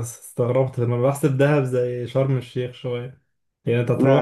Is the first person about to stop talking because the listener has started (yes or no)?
no